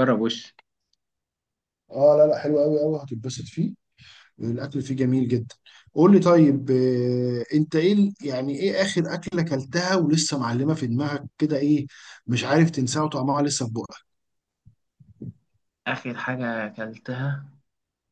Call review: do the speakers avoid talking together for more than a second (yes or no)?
yes